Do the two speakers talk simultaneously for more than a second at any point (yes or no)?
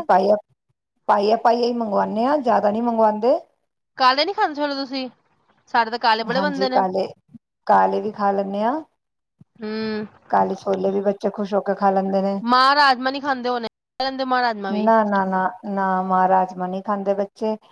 no